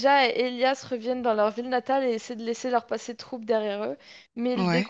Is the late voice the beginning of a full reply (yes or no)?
no